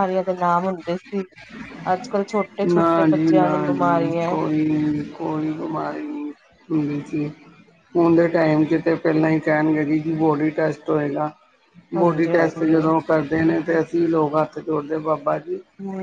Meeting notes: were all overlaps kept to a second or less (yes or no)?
no